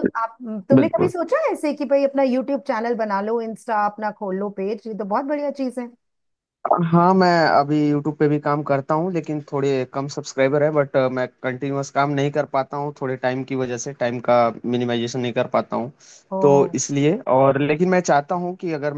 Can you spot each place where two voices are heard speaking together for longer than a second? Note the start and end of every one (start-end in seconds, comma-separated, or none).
none